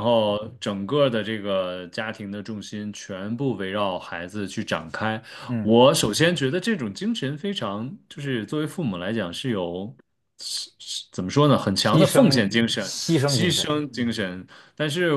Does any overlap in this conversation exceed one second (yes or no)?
yes